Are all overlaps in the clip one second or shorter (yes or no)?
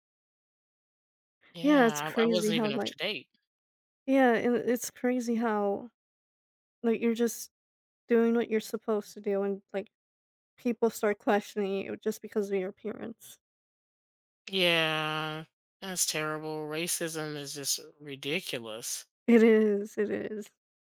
no